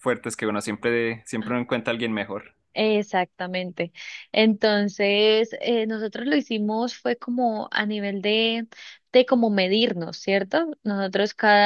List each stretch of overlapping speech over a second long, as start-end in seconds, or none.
none